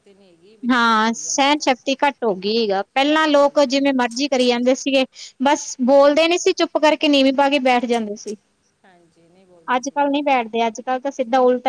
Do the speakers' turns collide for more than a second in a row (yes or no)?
yes